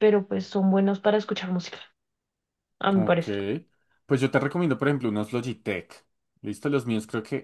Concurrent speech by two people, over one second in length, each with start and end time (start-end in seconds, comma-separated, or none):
none